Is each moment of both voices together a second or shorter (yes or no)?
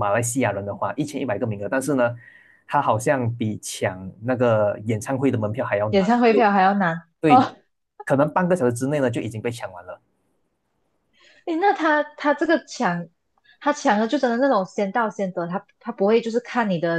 yes